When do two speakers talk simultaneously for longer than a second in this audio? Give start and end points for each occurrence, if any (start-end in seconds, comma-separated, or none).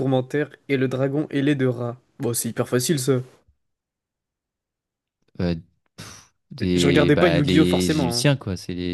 6.7-8.3